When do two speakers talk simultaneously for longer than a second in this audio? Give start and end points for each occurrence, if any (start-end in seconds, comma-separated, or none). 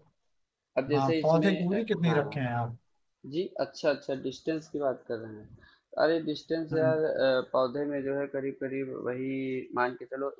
0.9-2.5